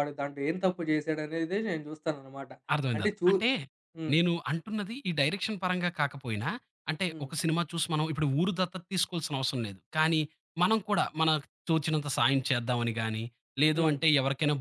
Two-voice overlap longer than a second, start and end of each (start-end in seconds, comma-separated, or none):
none